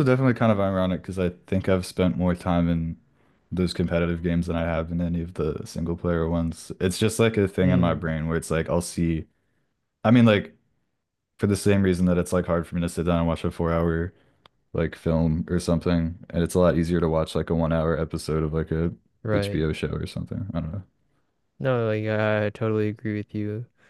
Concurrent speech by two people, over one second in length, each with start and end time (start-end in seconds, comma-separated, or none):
none